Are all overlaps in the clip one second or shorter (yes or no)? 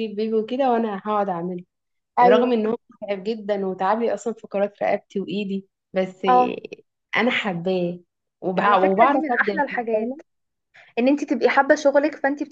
no